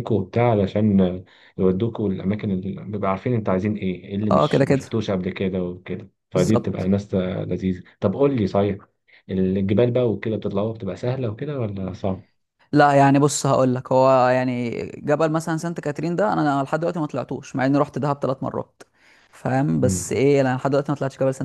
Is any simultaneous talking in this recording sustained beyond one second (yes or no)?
no